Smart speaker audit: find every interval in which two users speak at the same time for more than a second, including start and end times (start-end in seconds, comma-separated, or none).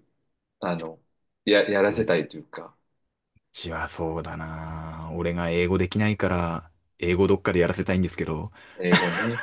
none